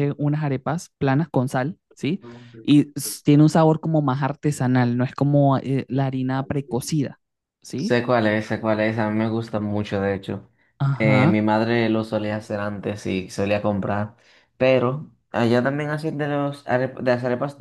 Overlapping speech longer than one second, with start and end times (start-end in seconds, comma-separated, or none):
none